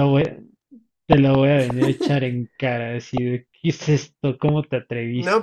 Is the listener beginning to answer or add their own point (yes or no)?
yes